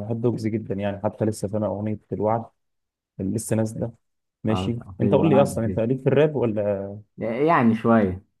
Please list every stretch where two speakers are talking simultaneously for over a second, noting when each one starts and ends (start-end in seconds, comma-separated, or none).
4.5-5.8